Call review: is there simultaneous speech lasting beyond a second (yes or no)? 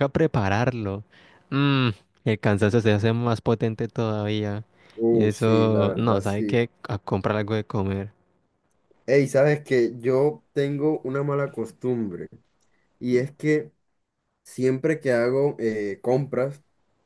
yes